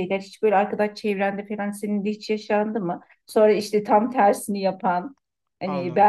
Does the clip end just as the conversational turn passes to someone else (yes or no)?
no